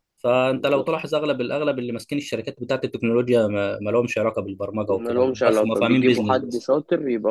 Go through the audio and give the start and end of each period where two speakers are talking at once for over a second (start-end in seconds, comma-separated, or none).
4.9-6.7